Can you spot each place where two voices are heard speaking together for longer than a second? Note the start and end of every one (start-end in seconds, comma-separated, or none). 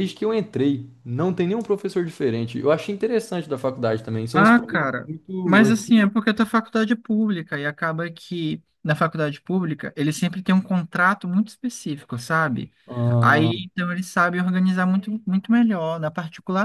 4.3-5.9